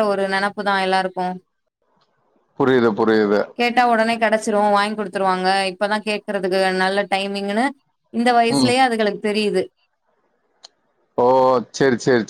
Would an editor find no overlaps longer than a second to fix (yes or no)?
yes